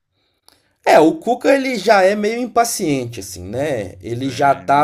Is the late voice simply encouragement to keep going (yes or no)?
yes